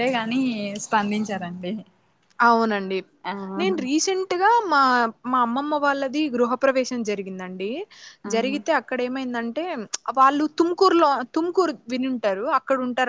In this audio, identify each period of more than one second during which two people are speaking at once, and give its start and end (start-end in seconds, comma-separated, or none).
none